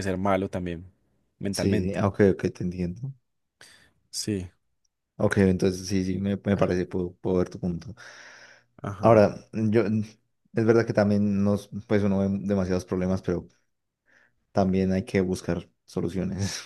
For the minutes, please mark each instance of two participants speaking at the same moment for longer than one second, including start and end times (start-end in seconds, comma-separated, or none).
none